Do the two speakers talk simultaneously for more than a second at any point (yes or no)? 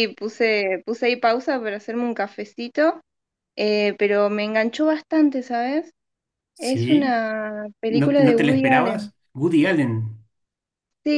yes